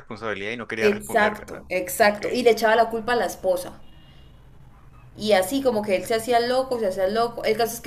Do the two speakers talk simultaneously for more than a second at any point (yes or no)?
yes